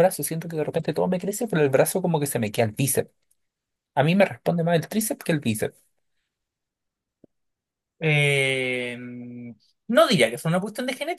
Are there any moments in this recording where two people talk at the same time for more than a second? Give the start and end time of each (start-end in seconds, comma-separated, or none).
none